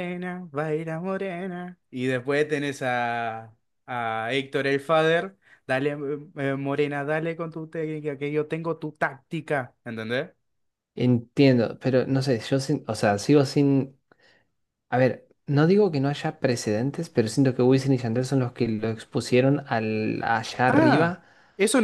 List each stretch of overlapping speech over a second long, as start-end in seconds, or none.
none